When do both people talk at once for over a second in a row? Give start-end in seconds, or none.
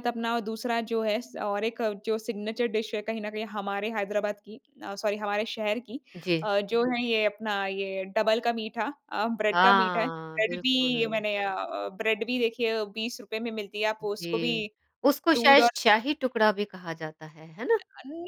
9.5-11.2